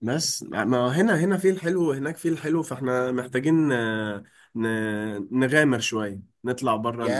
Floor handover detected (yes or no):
yes